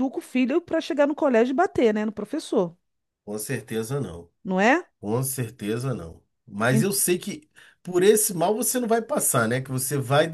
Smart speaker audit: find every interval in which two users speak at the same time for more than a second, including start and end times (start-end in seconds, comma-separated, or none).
none